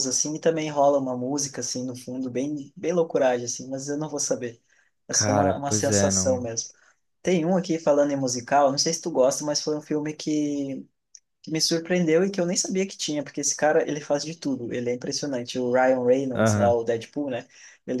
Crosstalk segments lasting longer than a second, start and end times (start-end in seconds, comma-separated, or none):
5.1-6.5